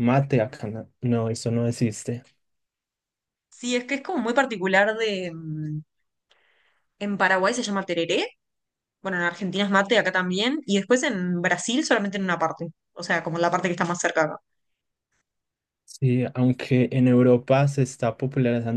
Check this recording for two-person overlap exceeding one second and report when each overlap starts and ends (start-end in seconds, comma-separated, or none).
none